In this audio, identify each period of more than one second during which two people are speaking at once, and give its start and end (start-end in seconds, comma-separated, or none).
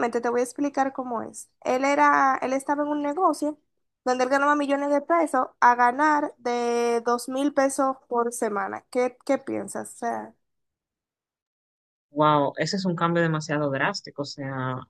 none